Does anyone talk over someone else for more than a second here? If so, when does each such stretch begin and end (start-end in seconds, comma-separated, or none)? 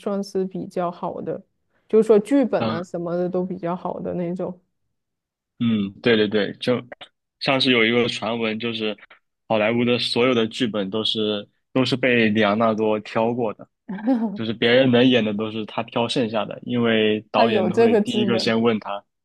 17.3-18.6